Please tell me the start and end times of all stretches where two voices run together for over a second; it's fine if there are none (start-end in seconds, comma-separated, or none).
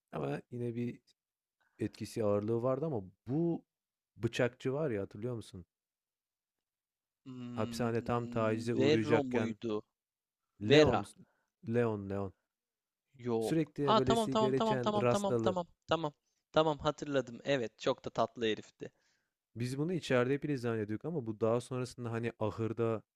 7.5-9.6, 13.4-15.6